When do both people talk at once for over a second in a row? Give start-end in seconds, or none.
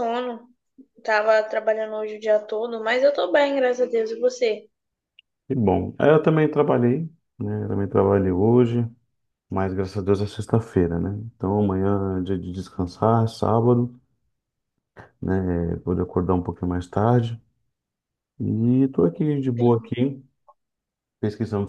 none